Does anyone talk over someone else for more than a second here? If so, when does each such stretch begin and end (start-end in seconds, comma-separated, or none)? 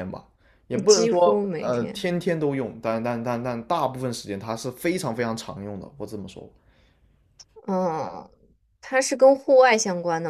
0.7-2.1